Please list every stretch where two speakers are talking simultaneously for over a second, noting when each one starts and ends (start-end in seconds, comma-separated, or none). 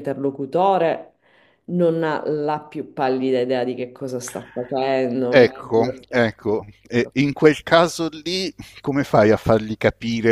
5.3-7.0